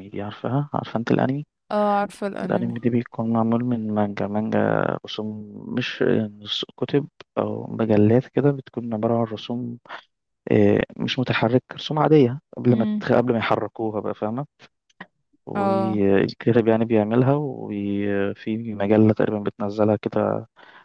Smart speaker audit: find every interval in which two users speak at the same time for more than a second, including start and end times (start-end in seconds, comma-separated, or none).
none